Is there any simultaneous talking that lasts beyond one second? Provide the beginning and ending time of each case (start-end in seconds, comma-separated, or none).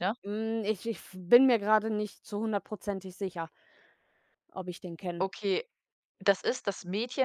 none